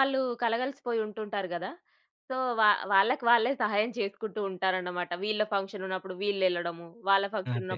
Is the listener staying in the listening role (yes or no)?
yes